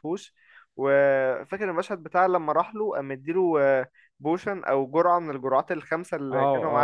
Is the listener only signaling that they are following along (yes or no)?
no